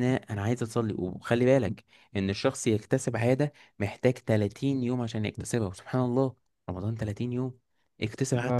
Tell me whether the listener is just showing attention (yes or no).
yes